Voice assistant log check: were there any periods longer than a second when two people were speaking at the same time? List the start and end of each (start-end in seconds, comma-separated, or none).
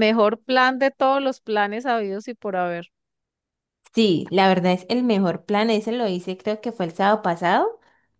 none